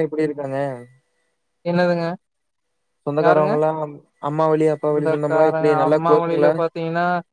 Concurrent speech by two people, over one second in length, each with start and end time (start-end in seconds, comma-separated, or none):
4.8-6.5